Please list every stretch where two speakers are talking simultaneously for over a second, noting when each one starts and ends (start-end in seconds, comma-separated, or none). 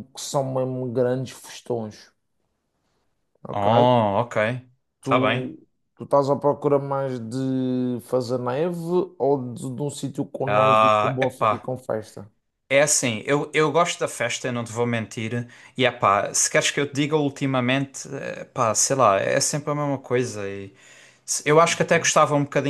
10.5-11.7